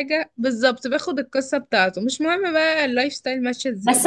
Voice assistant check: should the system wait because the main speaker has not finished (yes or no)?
no